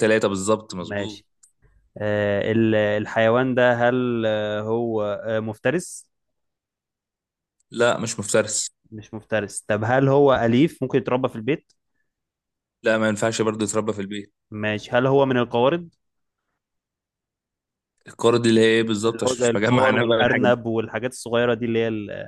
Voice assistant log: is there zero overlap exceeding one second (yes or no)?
no